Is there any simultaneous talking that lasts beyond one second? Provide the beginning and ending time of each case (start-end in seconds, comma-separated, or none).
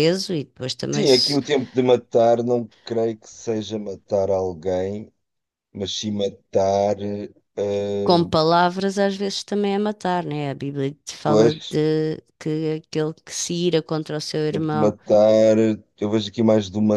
none